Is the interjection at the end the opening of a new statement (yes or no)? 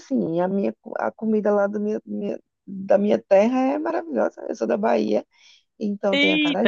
yes